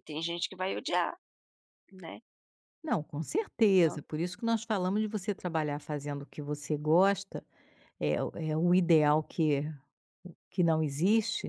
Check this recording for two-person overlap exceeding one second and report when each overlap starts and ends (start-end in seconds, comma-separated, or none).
none